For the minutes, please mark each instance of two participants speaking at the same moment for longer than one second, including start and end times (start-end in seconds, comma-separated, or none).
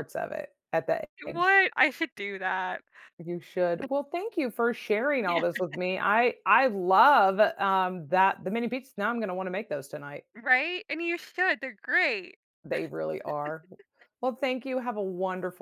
none